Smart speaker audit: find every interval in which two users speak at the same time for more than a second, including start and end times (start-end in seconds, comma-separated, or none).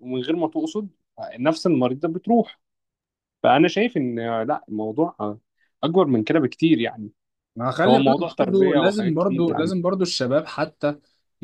7.9-9.7